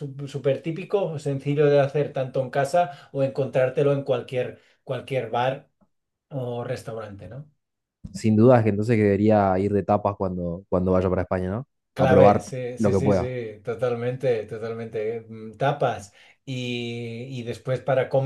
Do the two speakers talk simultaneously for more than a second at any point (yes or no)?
yes